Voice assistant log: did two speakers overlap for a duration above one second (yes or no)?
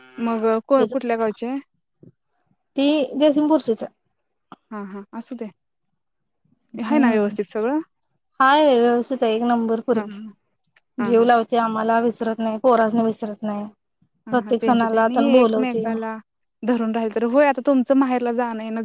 yes